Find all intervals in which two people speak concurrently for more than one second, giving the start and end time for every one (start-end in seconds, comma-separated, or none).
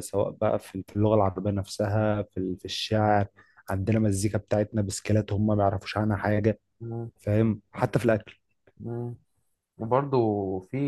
none